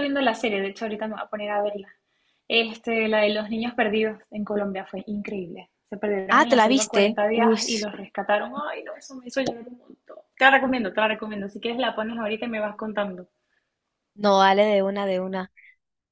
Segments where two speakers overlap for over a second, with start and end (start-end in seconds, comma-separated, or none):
6.3-7.6